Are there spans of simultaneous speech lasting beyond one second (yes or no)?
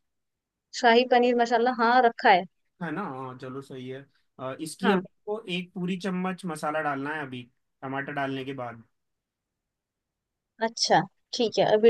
no